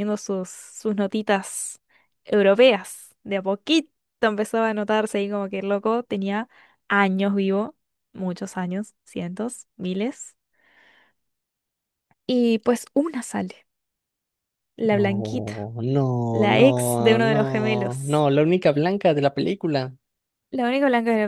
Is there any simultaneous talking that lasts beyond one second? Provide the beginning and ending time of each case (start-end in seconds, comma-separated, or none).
16.3-18.3